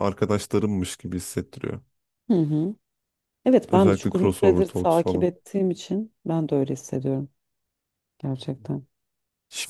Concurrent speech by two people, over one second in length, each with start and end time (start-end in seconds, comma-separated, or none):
3.7-5.3